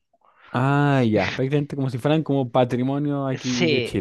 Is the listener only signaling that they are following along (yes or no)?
no